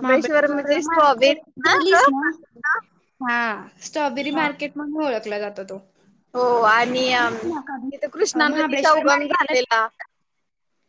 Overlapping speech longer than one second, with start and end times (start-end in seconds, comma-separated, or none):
0.5-2.2, 8.4-9.7